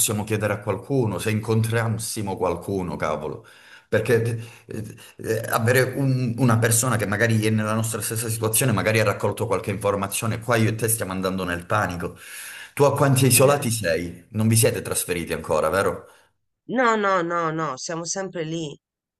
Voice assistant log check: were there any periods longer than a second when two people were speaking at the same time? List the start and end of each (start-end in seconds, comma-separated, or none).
none